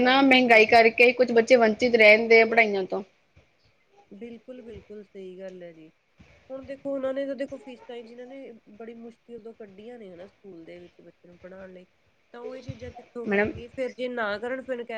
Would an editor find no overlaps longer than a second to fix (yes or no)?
yes